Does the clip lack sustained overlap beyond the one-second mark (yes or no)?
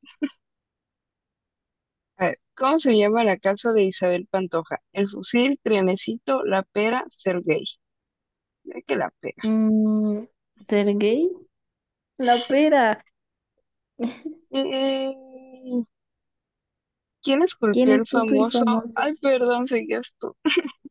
no